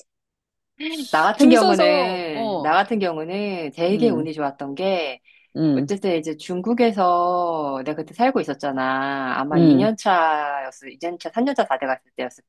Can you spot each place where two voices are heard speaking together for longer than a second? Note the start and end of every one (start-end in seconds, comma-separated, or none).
1.4-2.7